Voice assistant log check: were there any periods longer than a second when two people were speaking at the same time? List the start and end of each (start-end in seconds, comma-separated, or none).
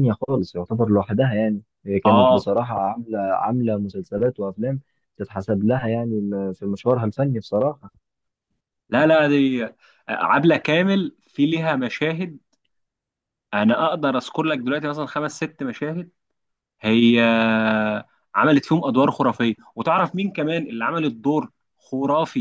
none